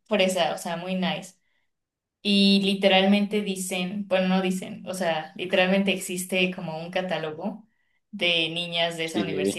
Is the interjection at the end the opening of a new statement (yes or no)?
no